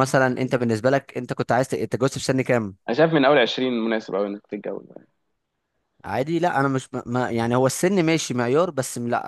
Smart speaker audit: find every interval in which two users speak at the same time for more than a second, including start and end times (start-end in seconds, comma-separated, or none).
none